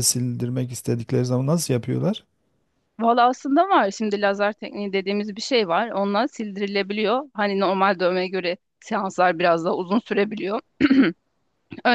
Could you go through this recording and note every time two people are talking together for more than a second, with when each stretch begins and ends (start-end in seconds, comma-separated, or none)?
none